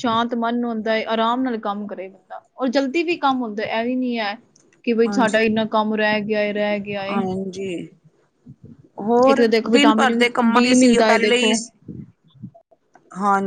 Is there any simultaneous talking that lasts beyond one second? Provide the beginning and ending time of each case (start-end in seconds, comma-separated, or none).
9.5-11.5